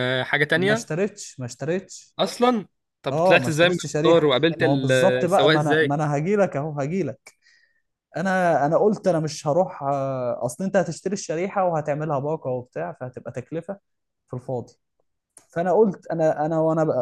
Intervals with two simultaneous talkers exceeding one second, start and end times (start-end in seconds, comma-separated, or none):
3.1-6.0